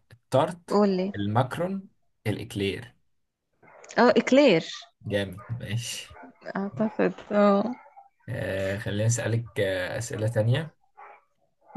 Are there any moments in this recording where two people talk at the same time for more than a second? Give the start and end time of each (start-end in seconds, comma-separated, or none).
none